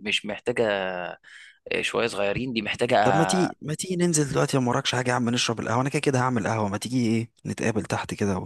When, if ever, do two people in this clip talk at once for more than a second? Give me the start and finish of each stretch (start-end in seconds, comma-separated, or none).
none